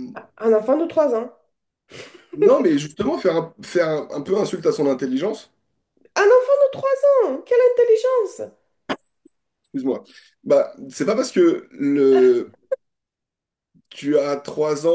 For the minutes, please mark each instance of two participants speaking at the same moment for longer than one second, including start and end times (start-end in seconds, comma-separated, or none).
none